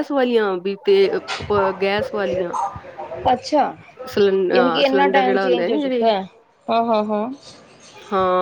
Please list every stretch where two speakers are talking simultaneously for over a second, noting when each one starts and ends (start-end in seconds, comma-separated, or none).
4.9-6.1